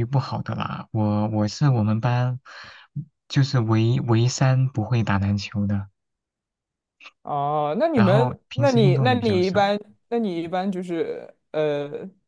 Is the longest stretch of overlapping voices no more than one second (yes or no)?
no